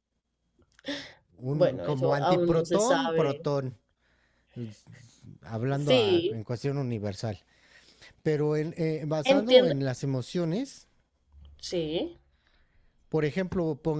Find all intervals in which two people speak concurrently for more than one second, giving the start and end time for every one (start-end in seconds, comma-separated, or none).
1.5-3.4